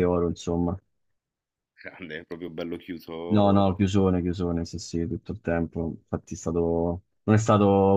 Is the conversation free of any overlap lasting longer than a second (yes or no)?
yes